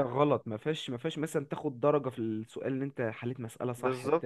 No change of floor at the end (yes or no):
no